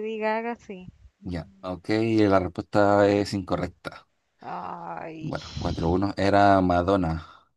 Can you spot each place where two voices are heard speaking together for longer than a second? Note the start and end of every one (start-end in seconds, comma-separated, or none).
none